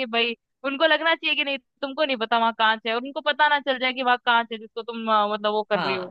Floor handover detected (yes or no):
yes